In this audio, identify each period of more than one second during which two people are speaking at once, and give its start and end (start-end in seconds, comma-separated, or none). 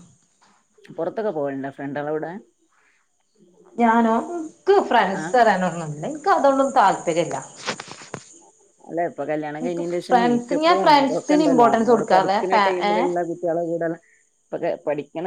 10.1-13.1